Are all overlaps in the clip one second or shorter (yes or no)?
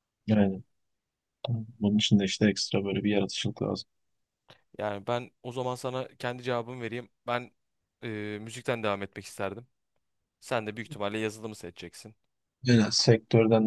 yes